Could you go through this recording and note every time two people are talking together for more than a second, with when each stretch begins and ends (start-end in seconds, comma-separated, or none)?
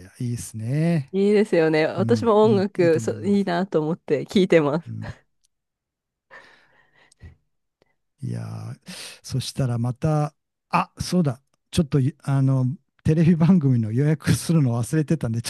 2.0-3.5